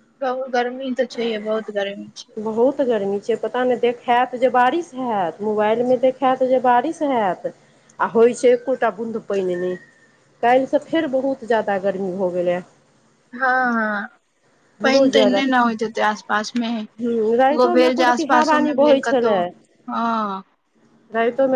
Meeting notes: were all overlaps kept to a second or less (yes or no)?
no